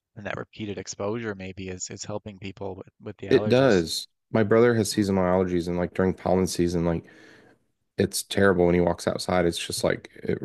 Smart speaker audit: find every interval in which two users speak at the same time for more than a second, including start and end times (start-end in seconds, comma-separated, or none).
none